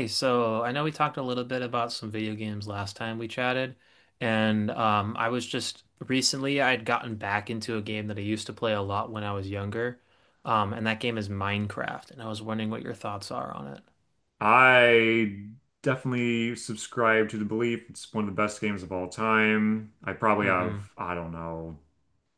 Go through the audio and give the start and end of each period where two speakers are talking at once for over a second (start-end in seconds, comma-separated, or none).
none